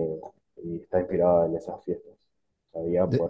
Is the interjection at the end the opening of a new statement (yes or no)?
no